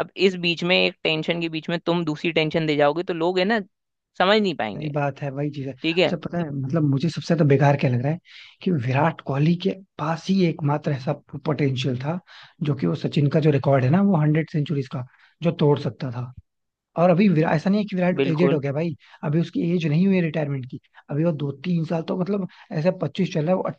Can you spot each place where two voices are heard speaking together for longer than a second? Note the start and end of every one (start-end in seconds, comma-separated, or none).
none